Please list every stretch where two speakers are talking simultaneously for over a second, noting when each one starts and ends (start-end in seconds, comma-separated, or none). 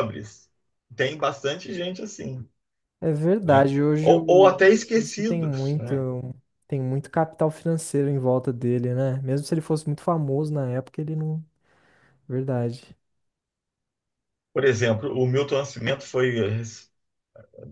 3.4-5.9